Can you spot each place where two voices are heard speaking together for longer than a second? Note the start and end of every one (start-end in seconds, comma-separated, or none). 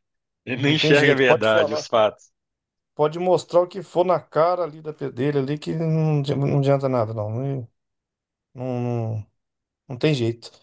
0.7-1.9